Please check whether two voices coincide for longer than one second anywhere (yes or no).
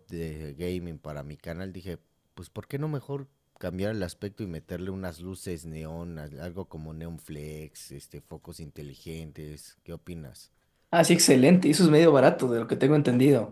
no